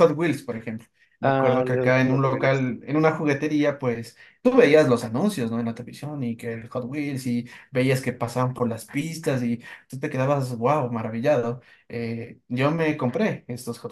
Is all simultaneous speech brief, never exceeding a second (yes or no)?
no